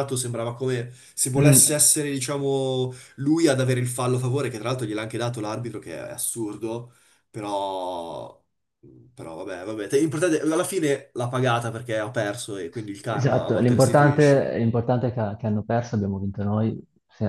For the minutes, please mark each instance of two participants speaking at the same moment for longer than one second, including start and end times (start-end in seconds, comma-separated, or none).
13.1-14.5